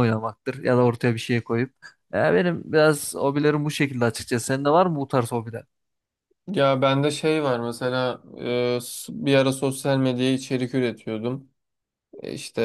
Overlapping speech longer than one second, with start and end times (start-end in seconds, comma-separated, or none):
none